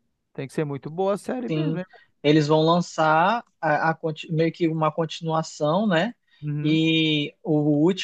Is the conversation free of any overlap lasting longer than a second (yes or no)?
yes